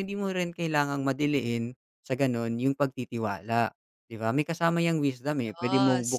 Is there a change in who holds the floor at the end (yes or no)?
no